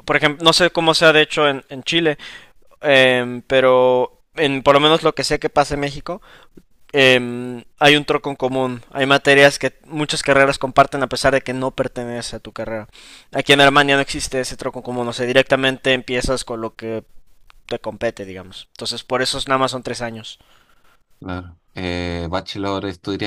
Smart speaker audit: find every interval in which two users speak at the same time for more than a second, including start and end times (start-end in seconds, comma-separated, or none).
none